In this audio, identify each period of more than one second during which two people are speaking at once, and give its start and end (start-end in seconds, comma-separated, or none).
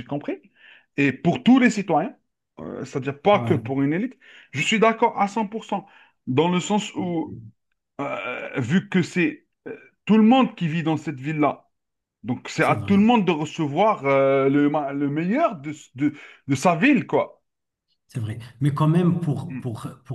none